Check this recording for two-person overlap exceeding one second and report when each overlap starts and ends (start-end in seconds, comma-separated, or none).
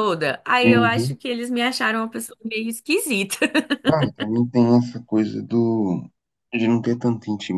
none